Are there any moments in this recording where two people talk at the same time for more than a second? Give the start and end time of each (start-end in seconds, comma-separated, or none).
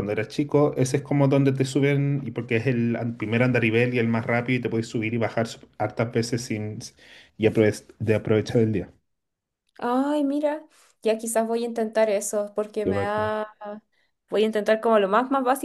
none